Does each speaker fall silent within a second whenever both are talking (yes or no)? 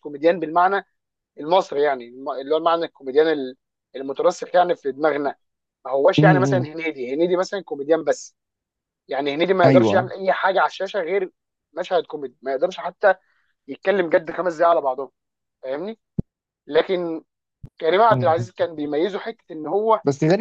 yes